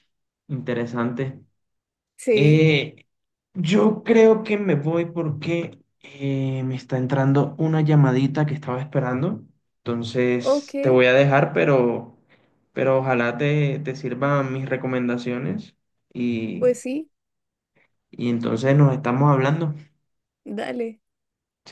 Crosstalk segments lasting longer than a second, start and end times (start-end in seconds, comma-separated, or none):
none